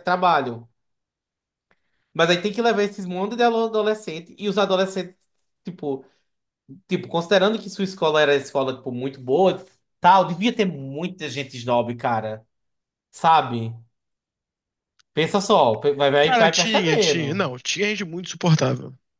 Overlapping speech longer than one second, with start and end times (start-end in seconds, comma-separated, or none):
16.2-17.4